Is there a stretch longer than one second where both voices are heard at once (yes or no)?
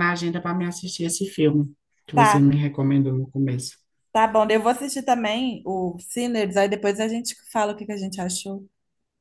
no